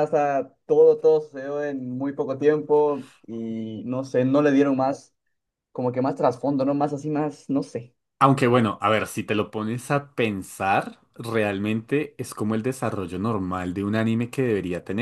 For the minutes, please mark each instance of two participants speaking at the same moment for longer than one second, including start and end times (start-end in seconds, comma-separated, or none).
none